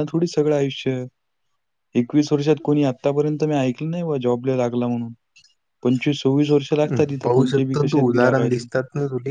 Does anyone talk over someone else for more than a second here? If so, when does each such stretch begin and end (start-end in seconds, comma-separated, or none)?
6.9-8.7